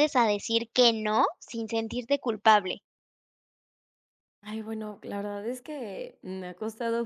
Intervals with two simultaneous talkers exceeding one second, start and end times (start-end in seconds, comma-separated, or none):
none